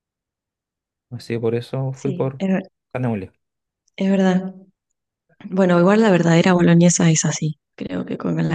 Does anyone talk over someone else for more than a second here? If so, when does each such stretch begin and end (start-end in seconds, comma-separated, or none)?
none